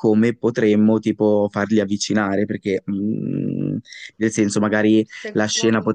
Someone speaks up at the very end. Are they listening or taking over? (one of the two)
listening